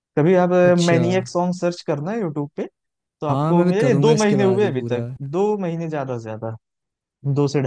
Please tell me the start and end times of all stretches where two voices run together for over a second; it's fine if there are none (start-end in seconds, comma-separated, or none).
3.3-5.1